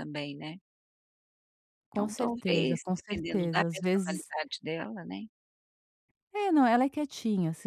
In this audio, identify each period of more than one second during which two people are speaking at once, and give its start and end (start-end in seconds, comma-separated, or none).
1.9-4.3